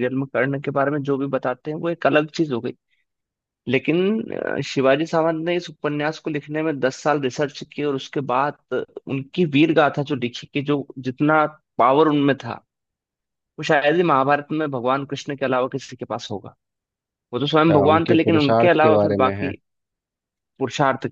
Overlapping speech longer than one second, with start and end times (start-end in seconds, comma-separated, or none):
17.7-19.5